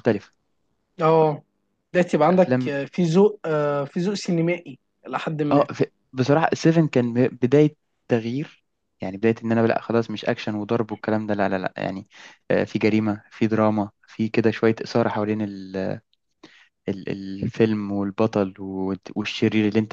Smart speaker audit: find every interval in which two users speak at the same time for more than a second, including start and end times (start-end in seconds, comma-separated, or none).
none